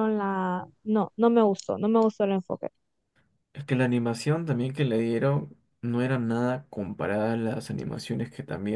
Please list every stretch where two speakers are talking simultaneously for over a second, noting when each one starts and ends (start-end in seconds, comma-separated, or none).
none